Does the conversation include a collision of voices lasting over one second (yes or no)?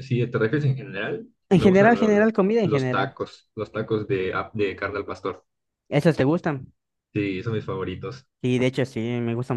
yes